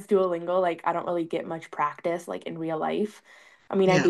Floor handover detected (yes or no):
no